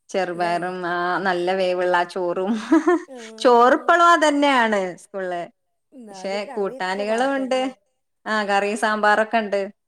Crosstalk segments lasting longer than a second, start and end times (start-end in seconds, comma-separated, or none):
6.1-7.6